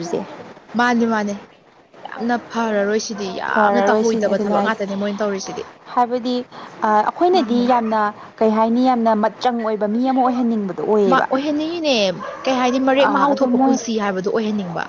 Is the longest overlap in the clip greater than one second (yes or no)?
yes